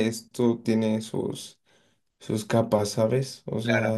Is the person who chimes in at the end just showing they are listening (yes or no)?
no